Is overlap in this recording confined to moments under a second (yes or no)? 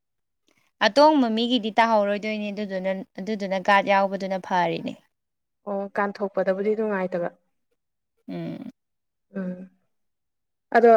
yes